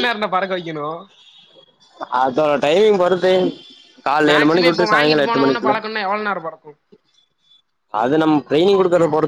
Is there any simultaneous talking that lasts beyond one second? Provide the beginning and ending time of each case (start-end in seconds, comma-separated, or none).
4.3-5.7